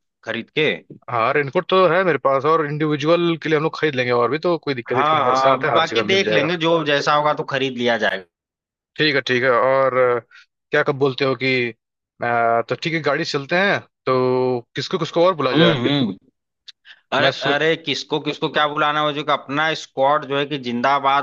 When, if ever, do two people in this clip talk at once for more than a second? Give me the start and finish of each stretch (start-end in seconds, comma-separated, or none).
4.9-6.5